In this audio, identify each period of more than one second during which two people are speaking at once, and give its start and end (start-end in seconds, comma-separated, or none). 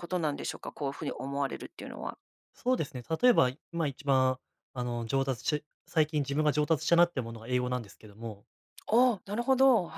none